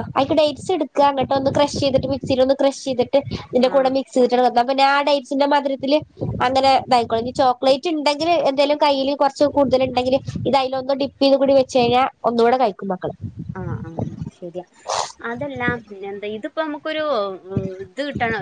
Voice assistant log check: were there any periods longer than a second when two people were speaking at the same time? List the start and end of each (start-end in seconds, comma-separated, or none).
none